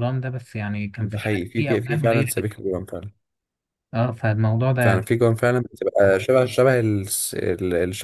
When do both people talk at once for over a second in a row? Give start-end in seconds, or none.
1.0-2.6